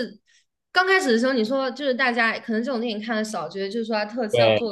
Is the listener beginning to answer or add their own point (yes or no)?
no